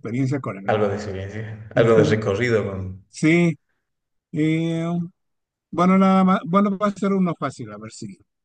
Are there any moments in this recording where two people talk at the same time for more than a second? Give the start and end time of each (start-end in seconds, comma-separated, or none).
none